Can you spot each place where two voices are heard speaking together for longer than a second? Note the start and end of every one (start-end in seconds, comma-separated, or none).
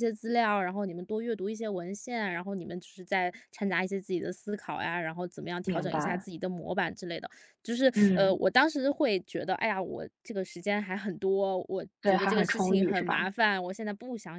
12.0-13.3